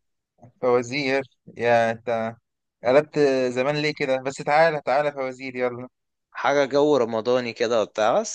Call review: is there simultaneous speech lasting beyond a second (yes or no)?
no